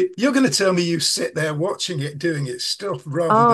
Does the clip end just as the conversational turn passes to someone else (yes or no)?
yes